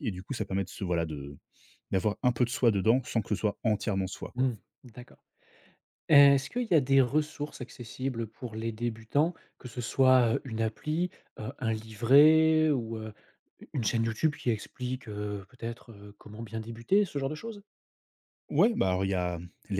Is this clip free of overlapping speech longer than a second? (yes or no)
yes